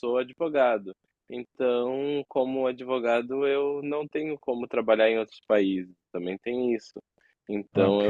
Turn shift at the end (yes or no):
no